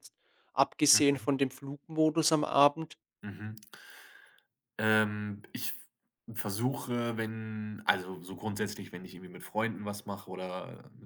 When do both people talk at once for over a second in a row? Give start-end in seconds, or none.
none